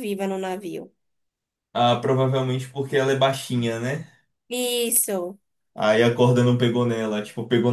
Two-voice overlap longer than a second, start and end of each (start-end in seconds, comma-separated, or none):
none